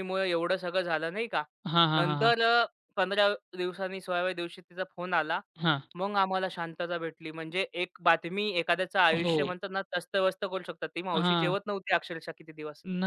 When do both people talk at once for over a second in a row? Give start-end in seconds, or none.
none